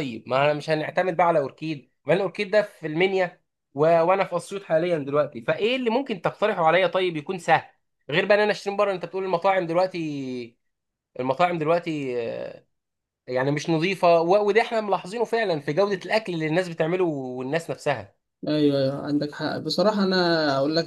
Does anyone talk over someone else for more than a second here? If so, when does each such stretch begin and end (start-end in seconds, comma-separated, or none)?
none